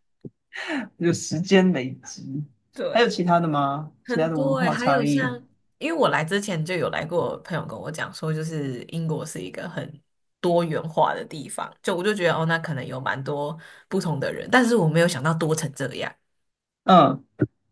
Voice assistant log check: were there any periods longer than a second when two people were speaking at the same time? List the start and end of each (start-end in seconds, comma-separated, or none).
4.0-5.3